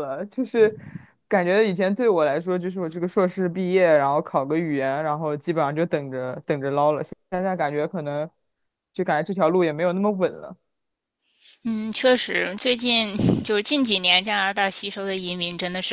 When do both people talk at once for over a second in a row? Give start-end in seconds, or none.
none